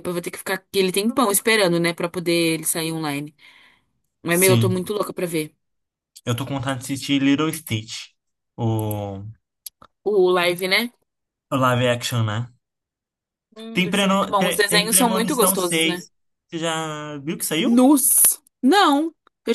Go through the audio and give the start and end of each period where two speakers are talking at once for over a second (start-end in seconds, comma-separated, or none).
13.7-16.0